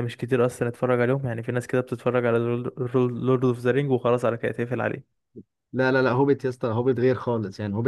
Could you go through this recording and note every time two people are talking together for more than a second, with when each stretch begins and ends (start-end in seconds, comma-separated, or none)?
none